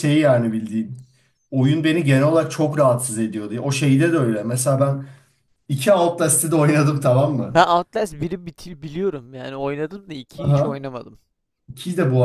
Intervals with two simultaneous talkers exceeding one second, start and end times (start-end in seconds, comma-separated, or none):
none